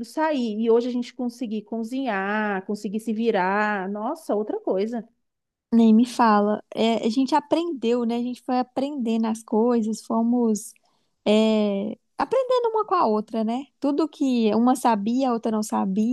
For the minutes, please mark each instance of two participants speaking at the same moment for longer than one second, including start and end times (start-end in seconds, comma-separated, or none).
none